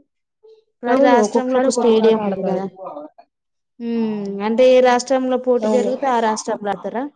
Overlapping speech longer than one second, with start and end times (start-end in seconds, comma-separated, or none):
0.9-2.6